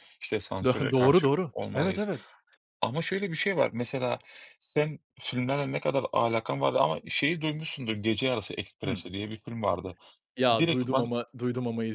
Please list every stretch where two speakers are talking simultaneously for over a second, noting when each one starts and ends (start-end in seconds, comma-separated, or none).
0.6-2.1